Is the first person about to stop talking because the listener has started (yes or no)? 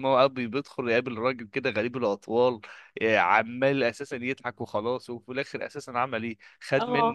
no